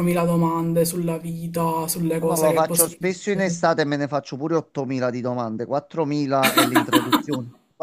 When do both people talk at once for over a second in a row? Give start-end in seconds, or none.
2.2-3.6